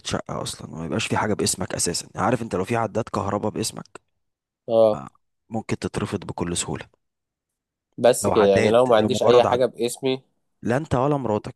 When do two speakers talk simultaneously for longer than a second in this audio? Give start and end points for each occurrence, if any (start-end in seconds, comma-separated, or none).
8.2-9.6